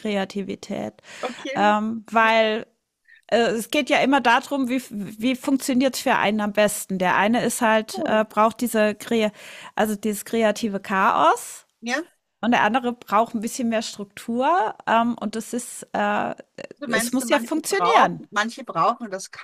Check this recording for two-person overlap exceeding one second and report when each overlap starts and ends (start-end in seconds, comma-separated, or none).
16.9-18.2